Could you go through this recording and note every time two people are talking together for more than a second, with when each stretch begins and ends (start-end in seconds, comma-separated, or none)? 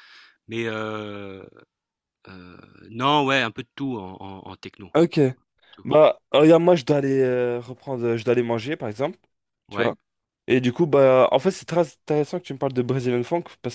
none